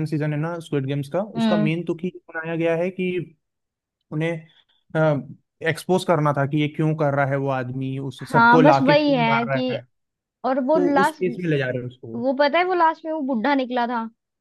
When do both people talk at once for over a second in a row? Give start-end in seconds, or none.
8.3-9.8